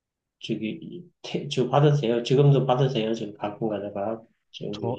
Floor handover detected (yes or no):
yes